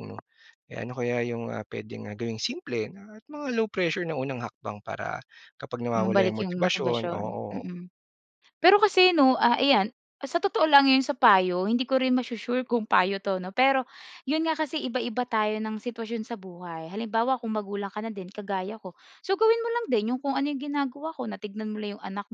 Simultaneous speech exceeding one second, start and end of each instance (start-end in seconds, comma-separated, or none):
5.9-7.7